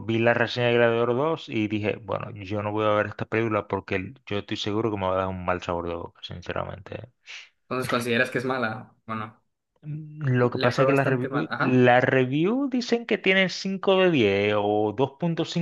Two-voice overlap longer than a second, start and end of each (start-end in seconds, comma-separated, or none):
10.4-11.9